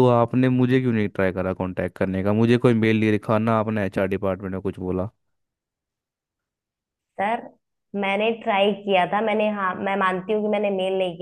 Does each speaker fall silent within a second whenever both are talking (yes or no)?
yes